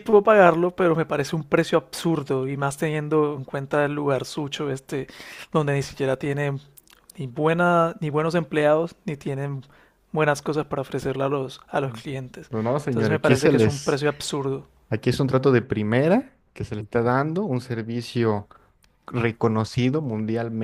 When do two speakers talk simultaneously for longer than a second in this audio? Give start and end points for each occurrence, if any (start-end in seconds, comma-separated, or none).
12.5-14.0